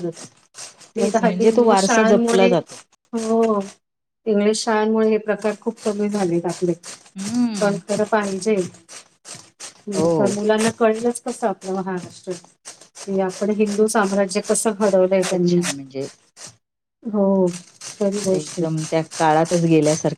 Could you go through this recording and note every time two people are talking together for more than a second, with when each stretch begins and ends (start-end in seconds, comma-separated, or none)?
1.0-2.5